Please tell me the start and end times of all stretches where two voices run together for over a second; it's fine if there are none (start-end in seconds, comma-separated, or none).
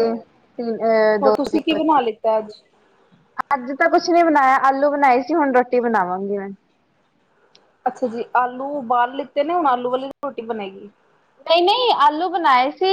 none